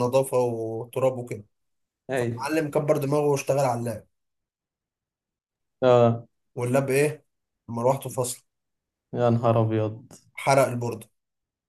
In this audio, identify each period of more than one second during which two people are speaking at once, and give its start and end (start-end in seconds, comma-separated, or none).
none